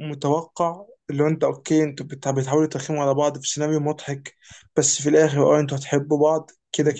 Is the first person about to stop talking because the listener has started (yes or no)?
yes